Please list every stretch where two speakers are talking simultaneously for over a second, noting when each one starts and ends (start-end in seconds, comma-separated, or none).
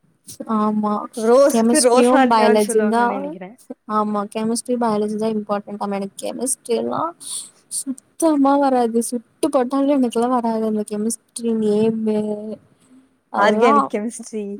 1.5-3.0